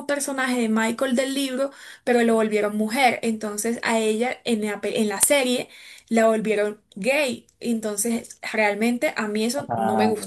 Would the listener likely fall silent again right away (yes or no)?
yes